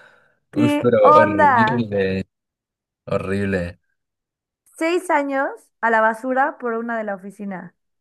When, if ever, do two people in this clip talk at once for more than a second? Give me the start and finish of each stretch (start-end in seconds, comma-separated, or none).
0.5-1.8